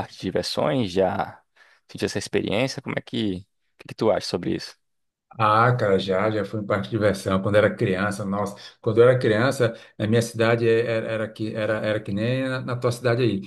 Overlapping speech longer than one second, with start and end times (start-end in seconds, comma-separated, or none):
none